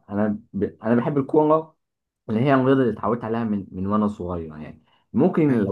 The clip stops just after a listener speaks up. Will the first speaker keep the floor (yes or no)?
yes